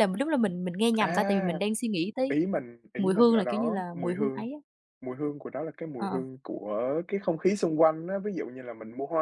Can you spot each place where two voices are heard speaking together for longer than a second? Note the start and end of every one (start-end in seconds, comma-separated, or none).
3.0-4.5